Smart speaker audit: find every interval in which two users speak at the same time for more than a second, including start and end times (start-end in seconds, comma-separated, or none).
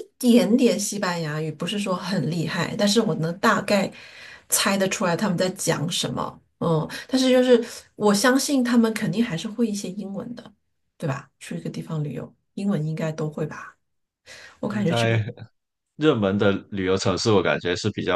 none